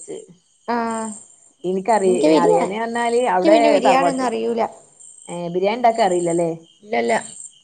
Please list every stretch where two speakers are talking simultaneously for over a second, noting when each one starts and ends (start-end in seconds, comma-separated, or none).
2.1-4.3